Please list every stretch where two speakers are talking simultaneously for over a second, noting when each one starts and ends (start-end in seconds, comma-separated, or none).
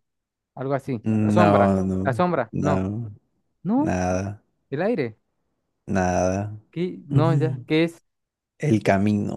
1.0-2.9